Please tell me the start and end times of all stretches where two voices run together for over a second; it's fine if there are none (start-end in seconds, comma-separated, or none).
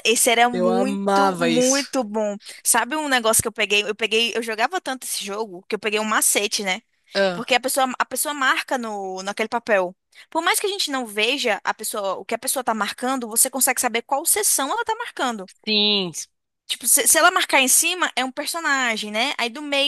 0.5-1.9